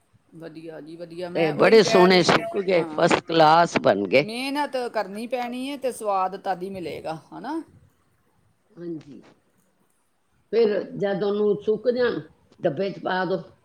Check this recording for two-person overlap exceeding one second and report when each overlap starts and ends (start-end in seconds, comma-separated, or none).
1.3-3.1